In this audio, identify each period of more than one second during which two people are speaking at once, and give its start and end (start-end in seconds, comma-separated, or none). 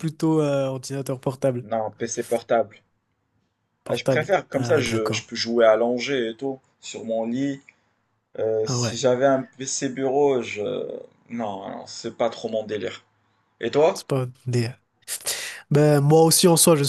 3.9-5.3